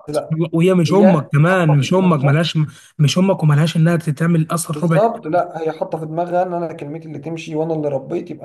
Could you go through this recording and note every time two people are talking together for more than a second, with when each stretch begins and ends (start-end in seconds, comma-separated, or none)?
0.9-2.4